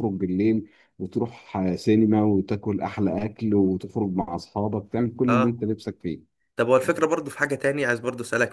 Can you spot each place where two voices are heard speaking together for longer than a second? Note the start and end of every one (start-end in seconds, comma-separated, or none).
none